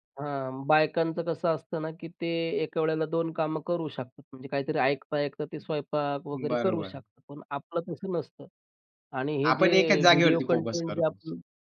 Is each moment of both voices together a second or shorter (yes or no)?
no